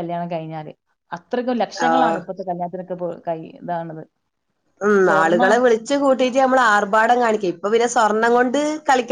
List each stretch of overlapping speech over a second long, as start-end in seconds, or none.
none